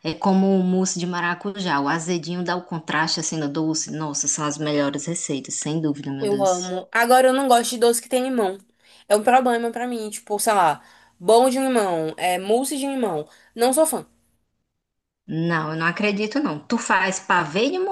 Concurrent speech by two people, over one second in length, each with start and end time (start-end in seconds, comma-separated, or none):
none